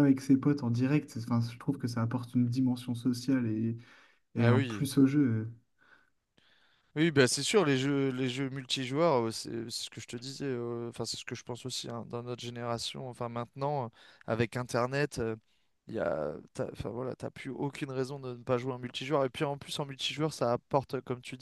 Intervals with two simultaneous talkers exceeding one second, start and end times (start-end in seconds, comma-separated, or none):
none